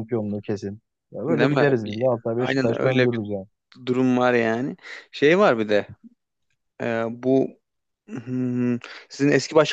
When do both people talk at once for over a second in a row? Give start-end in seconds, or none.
1.3-3.2